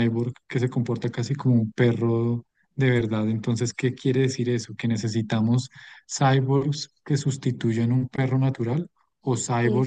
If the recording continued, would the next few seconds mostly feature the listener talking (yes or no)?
no